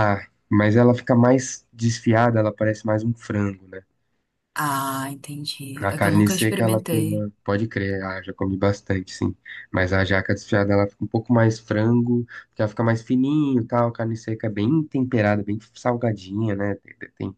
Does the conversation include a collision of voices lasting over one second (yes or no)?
yes